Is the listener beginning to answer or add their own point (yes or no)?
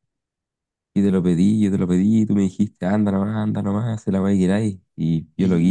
yes